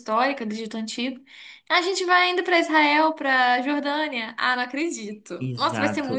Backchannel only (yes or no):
no